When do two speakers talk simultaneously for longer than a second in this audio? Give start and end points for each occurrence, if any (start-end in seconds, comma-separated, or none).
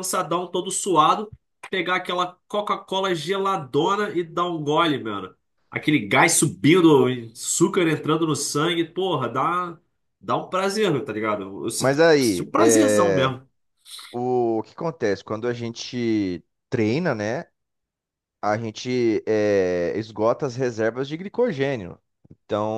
11.8-13.3